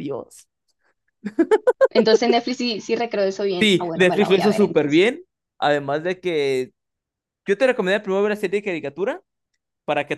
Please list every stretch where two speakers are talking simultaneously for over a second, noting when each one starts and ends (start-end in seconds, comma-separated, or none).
3.6-5.0